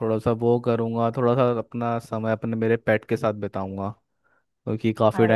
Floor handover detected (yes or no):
no